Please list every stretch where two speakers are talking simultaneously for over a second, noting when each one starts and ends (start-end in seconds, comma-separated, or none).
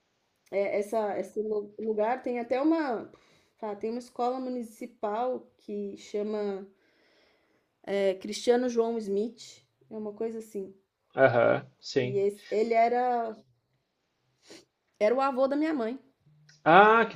none